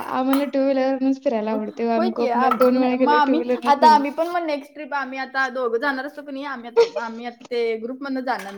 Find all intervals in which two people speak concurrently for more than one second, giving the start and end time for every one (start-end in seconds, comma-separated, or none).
1.9-4.0